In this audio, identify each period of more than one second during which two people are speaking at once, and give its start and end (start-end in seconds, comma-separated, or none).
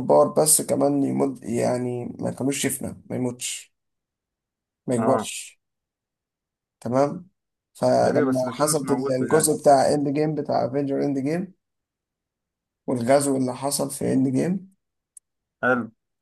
8.0-9.5